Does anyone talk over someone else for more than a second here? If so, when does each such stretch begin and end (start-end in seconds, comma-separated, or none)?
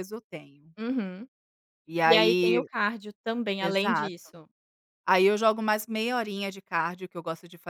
none